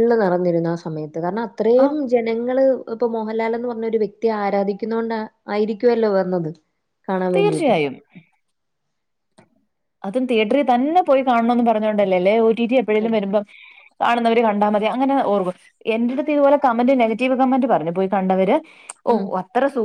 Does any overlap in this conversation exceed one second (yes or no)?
no